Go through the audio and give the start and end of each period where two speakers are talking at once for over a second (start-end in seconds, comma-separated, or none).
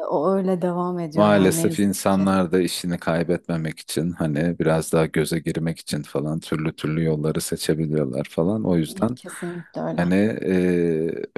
1.1-2.4